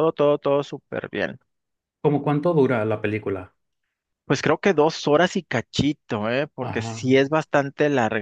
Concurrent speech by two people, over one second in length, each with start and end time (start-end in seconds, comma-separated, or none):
none